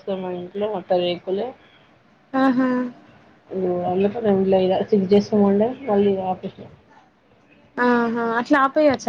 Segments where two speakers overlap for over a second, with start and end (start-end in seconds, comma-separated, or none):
none